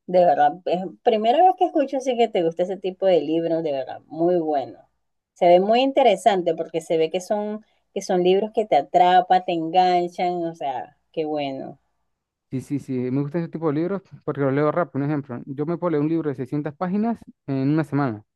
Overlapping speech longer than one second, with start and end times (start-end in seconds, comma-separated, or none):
none